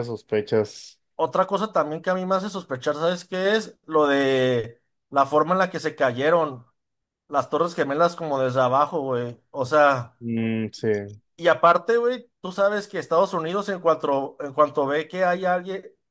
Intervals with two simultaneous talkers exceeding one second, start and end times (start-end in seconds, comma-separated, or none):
none